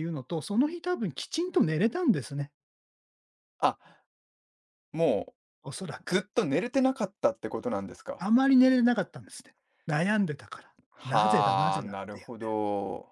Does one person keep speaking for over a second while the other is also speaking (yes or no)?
yes